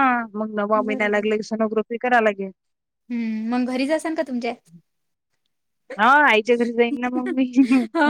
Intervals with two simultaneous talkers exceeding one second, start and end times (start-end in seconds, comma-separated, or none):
none